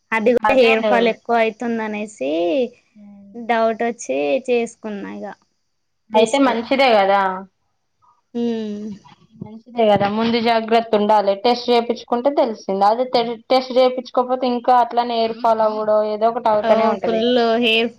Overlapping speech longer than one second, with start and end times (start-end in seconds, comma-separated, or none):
none